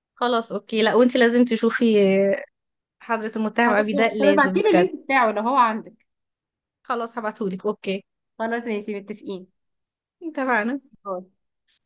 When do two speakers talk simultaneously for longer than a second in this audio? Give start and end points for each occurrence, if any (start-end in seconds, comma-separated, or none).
3.7-4.9